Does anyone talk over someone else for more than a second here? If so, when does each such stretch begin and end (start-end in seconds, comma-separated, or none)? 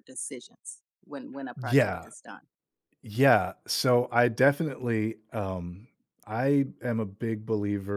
none